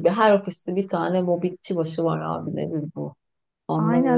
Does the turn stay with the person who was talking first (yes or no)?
no